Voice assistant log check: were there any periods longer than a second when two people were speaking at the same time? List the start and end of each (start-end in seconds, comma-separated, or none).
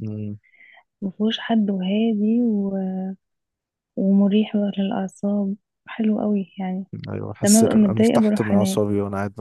7.4-8.8